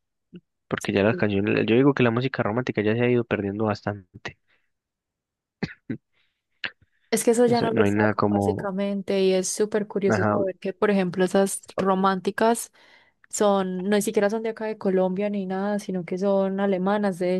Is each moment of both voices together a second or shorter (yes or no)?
no